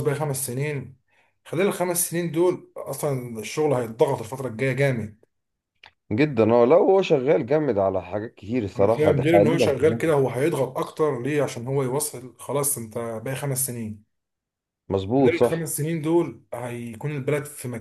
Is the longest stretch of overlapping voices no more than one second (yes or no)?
no